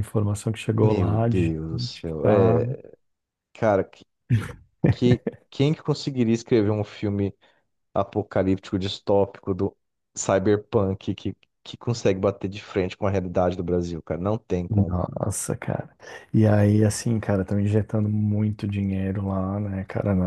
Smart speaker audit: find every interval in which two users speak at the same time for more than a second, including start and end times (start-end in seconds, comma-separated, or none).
0.8-2.6